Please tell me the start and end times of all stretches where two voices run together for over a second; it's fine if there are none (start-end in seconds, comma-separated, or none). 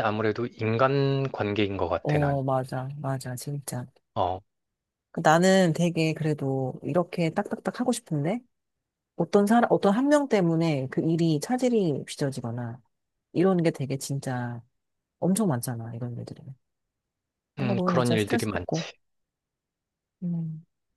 17.6-18.9